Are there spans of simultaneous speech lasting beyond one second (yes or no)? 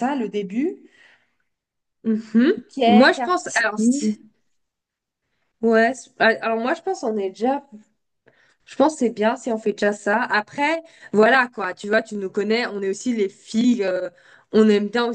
yes